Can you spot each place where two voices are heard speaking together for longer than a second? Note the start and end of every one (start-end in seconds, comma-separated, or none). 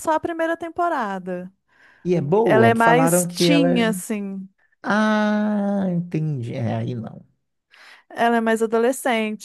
2.4-3.8